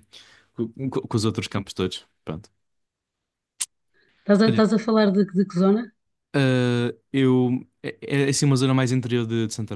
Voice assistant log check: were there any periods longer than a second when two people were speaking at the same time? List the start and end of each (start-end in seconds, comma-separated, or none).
none